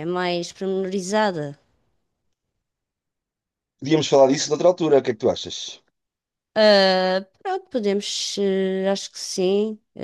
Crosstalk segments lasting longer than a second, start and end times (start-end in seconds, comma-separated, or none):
none